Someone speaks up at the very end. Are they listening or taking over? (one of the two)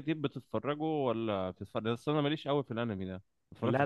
taking over